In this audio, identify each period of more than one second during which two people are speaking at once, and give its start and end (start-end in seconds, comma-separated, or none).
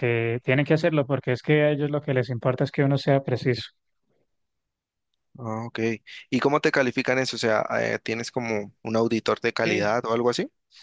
none